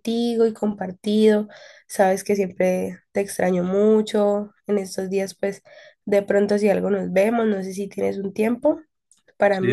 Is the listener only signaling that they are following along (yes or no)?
no